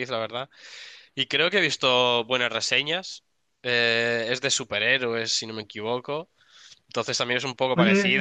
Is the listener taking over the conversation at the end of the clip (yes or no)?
no